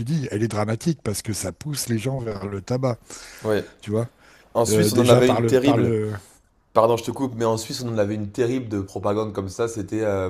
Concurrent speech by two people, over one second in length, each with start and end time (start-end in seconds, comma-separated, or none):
4.7-5.9